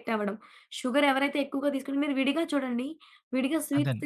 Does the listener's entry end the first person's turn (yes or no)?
no